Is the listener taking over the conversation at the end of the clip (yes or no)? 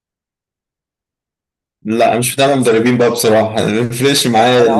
yes